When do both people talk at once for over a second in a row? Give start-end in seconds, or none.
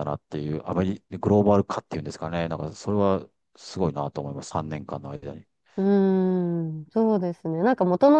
none